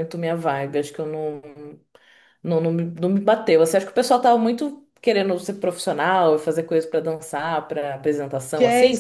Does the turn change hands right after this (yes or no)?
yes